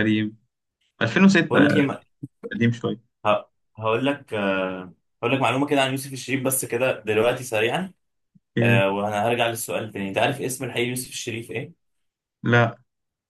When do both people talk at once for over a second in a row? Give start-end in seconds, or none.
none